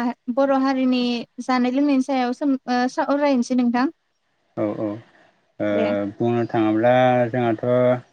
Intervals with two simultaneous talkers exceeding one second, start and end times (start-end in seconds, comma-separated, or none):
none